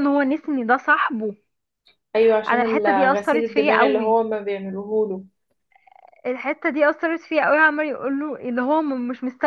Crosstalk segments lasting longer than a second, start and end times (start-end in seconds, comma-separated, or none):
2.5-4.2